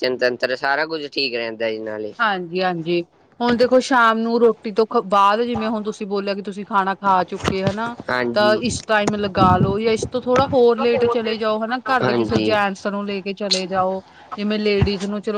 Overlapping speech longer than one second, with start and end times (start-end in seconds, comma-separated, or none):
none